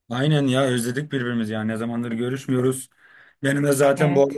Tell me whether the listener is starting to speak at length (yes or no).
no